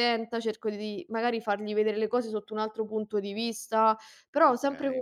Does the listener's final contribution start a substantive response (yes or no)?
no